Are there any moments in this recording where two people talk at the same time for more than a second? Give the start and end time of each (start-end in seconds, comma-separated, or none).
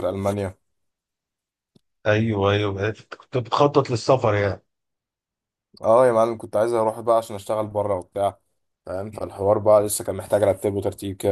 none